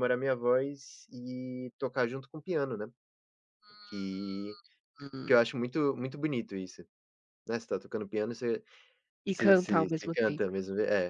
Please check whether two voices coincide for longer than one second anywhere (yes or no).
yes